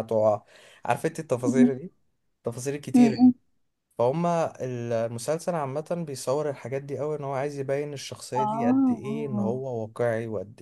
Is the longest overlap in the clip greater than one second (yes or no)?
yes